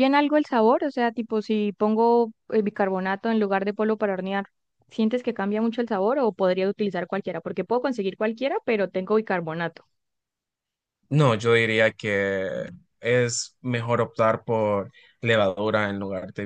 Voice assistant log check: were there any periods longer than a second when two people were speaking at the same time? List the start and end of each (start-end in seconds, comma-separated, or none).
none